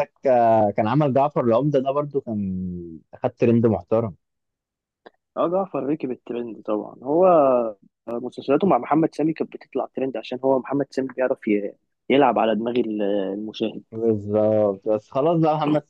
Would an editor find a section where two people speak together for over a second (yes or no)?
no